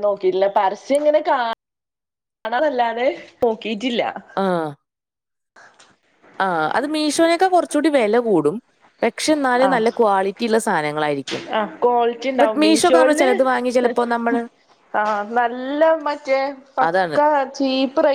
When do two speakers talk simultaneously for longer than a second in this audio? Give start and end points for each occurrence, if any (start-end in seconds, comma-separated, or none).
none